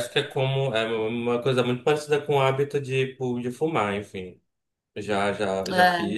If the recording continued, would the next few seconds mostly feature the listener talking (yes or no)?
no